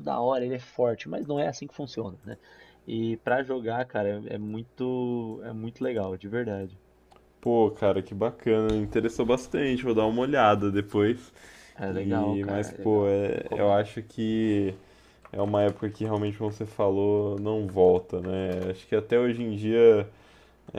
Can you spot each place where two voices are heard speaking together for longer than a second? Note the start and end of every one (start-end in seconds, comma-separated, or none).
11.9-13.9